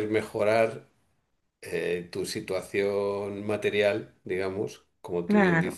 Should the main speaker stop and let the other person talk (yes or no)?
no